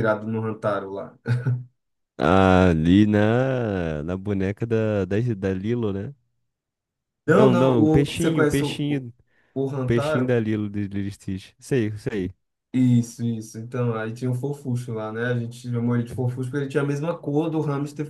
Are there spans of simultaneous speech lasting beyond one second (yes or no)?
yes